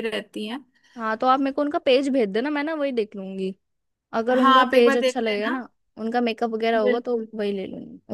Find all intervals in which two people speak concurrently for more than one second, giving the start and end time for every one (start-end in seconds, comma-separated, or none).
4.3-5.5